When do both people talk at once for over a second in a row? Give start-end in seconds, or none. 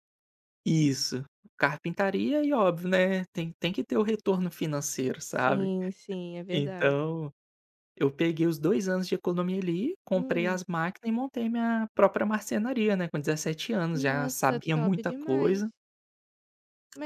13.9-15.7